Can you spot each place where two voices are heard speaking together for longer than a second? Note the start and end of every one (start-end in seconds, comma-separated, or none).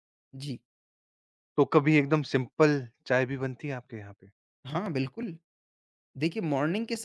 none